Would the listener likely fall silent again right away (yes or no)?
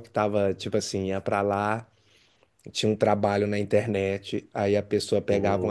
yes